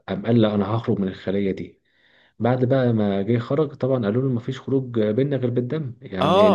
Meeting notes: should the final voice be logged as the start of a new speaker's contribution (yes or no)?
yes